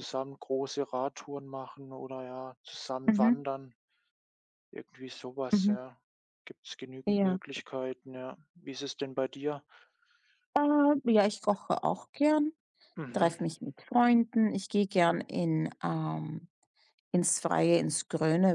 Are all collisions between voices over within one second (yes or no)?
yes